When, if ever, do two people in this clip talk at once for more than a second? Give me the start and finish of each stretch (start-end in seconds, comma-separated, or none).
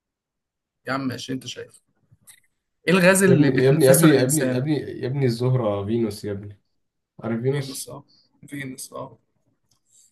3.3-4.6